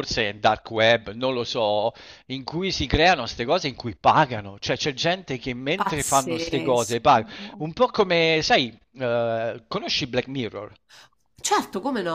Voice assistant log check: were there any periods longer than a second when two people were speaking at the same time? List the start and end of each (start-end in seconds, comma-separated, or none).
5.8-7.2